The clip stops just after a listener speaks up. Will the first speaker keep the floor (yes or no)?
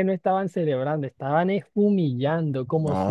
yes